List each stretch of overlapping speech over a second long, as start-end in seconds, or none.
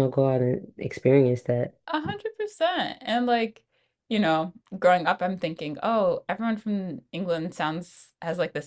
none